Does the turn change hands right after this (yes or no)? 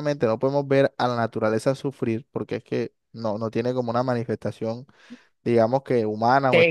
yes